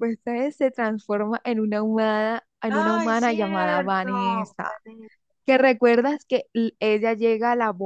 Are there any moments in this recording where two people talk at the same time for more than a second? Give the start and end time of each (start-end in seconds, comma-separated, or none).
2.7-4.5